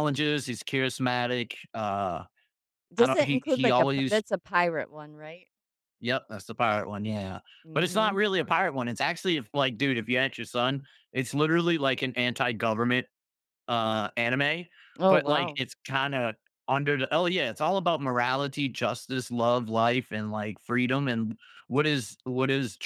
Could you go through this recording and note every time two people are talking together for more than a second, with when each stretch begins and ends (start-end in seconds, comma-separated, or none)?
3.0-4.2